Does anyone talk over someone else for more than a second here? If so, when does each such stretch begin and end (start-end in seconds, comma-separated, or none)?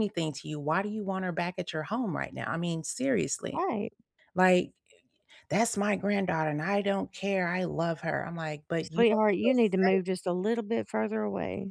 8.8-10.2